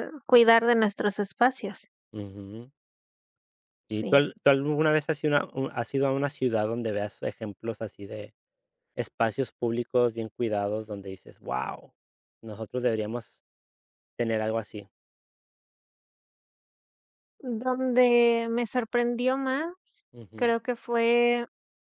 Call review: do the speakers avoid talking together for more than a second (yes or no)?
yes